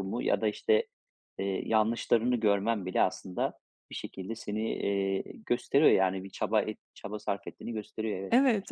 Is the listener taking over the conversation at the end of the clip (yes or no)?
yes